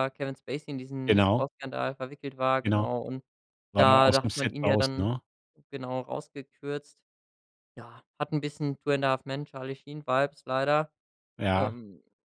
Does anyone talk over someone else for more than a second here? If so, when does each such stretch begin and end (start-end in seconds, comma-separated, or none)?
3.8-5.1